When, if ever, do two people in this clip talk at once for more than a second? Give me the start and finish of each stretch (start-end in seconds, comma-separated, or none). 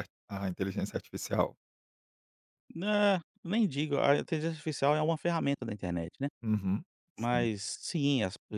none